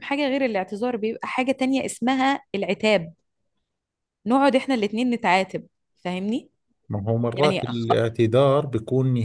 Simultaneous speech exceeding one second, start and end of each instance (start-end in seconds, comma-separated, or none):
none